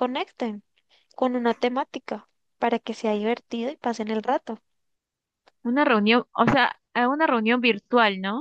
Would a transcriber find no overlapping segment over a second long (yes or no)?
yes